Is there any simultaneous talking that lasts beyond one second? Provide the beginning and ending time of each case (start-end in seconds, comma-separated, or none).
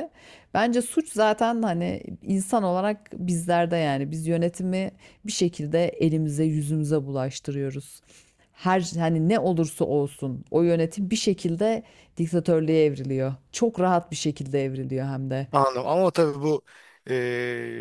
none